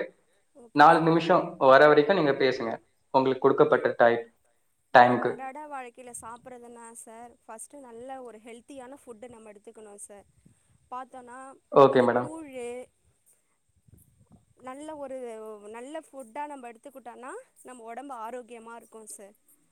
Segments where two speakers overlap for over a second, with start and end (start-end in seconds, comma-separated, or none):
none